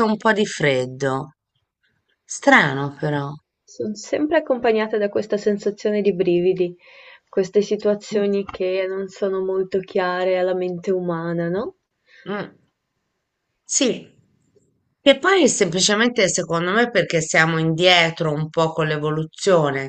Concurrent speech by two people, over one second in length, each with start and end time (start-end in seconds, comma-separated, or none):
none